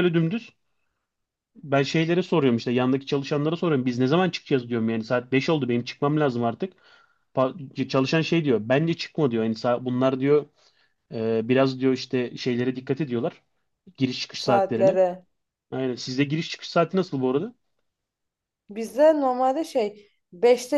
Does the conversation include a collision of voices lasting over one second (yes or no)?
no